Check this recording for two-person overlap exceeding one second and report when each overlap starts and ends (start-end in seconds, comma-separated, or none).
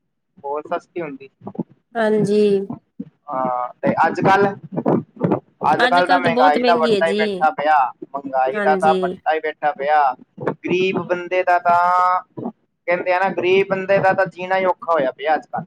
5.9-7.2